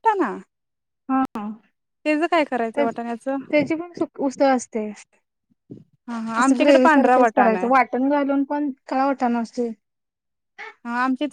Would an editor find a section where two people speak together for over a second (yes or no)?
yes